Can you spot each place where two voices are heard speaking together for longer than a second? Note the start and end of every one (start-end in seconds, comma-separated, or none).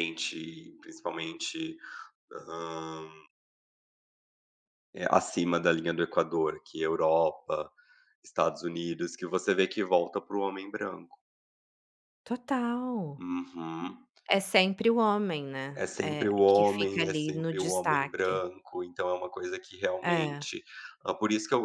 15.8-18.4